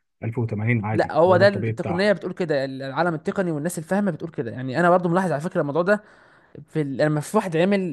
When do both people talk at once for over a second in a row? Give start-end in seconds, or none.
0.9-2.1